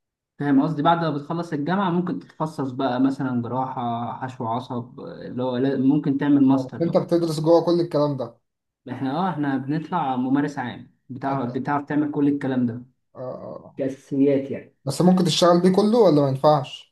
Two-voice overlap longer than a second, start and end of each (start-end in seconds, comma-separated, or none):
none